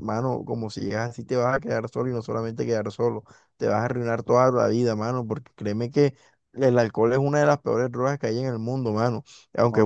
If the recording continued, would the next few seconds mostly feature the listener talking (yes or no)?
no